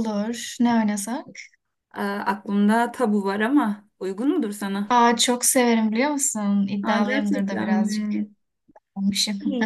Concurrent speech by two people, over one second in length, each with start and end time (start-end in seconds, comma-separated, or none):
6.8-8.1